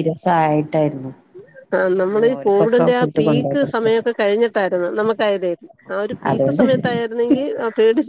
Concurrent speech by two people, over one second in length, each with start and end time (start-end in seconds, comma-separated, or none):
2.0-3.9